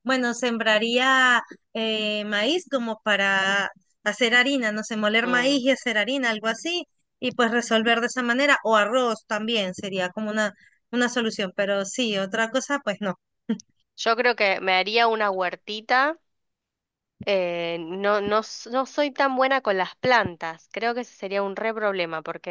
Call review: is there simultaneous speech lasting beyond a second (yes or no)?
no